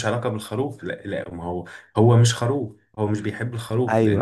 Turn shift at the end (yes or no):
yes